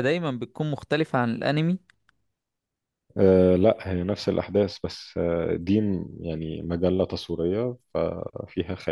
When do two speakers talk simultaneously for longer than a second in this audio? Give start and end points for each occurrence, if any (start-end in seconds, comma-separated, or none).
none